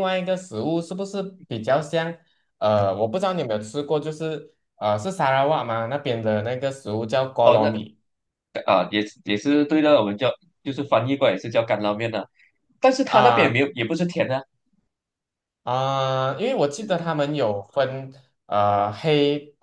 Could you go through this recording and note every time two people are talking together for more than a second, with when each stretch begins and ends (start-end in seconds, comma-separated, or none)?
none